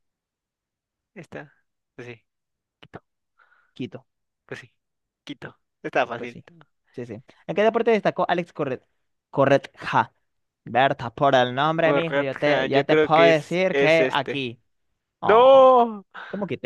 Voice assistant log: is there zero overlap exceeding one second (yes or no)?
no